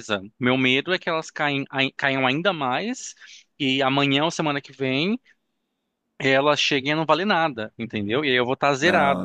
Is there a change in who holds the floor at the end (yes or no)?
yes